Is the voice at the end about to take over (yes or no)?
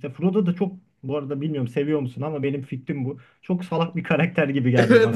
yes